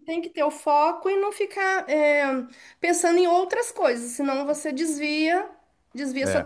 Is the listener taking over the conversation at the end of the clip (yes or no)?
no